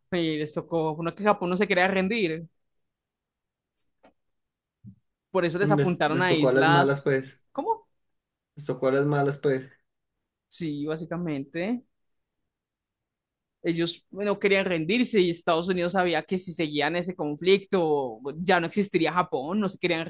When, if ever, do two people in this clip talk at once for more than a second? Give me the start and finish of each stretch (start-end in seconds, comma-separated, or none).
5.7-7.1